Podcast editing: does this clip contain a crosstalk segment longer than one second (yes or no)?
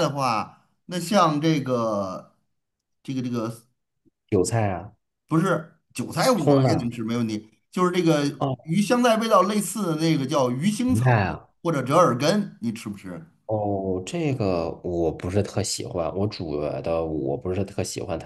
no